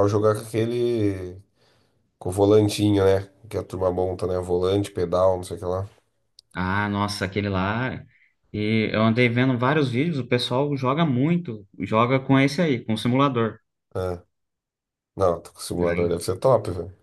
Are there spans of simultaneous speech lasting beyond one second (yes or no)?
no